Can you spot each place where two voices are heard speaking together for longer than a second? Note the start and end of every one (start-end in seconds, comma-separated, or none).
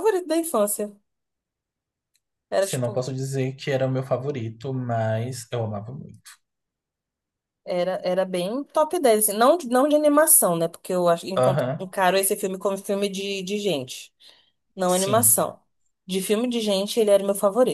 none